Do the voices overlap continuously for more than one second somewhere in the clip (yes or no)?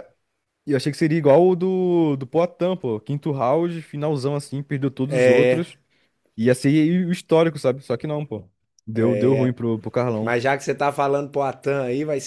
no